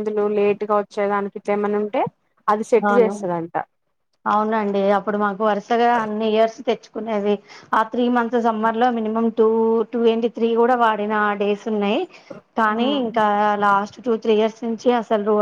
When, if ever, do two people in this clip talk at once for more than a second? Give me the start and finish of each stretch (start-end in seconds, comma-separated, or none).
none